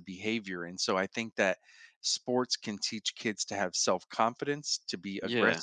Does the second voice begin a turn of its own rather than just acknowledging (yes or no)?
no